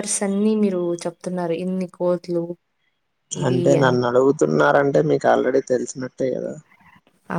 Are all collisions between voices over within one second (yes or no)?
yes